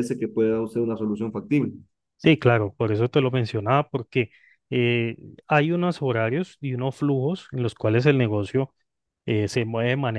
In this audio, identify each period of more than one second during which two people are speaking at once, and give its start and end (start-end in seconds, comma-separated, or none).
none